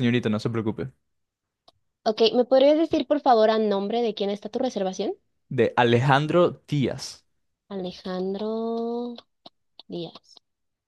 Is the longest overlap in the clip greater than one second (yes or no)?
no